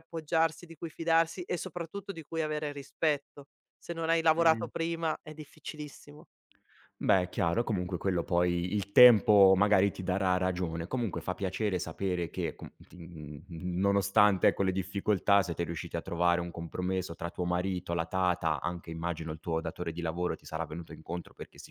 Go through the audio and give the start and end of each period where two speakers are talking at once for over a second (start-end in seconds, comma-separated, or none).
none